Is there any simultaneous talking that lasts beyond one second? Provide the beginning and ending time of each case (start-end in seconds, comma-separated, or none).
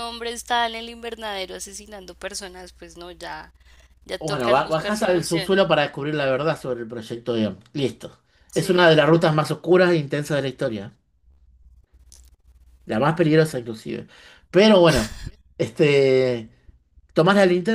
4.2-5.6